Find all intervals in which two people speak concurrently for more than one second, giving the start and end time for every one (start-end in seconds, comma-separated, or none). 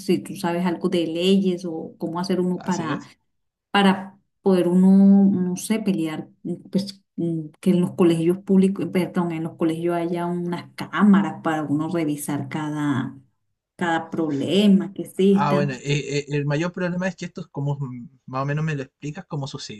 none